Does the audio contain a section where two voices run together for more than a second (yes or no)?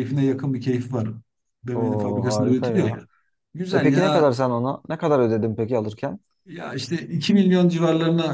yes